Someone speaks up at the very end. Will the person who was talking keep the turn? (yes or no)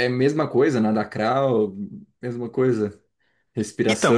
no